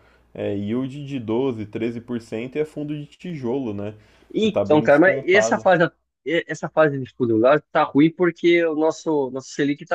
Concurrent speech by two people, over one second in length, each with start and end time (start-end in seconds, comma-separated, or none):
4.4-5.7